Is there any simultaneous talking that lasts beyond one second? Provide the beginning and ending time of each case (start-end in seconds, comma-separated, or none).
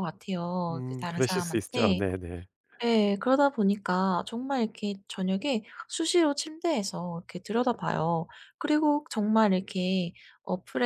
0.7-2.0